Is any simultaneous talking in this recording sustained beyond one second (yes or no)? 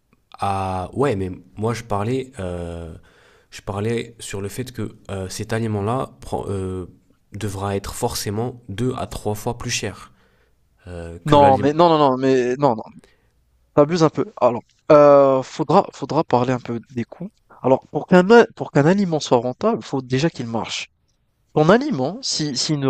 no